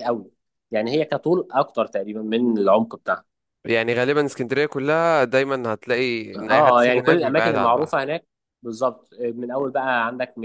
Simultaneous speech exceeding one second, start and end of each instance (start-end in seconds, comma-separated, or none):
6.4-7.9